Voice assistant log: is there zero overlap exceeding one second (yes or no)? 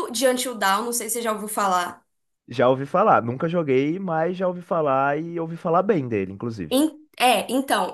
yes